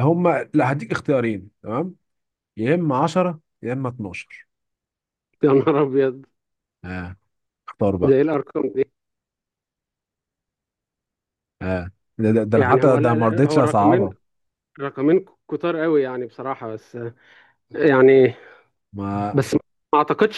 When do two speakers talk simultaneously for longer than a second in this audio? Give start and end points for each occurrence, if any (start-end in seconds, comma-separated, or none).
12.5-14.1